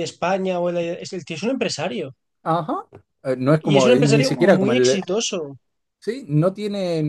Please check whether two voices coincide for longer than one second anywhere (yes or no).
yes